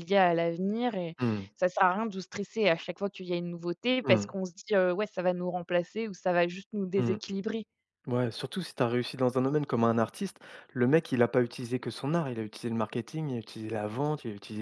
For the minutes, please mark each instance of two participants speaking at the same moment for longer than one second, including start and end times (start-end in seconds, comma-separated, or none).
none